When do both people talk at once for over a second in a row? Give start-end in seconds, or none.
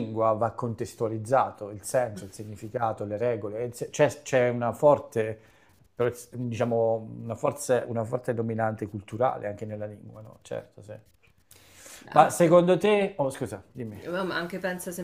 none